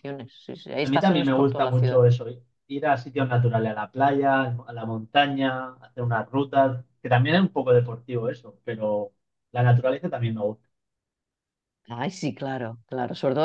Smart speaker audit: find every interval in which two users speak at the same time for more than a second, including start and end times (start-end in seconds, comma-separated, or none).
0.8-2.0